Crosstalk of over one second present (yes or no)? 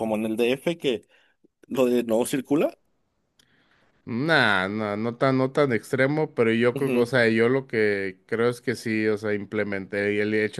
no